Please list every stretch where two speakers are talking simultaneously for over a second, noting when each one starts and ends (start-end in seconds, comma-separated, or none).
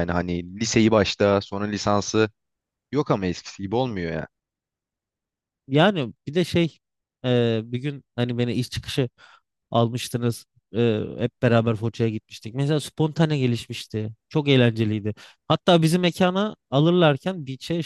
none